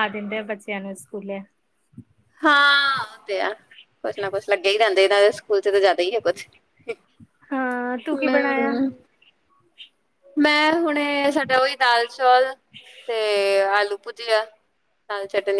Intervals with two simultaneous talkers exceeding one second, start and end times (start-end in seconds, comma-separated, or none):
none